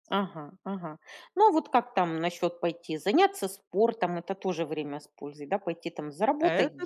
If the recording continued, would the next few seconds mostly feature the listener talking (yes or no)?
yes